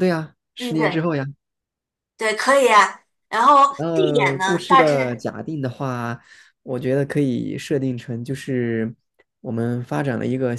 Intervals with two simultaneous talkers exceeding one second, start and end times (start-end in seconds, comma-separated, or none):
3.8-5.0